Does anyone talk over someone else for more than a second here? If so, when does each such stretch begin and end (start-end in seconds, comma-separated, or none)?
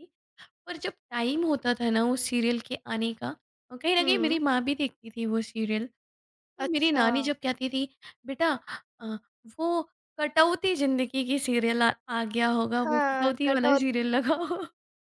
12.8-14.4